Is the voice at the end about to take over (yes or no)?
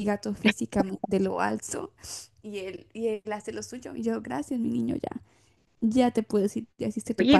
yes